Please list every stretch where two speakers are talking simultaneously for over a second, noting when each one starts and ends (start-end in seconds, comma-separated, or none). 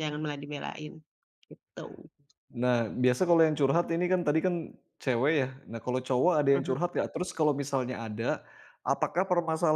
none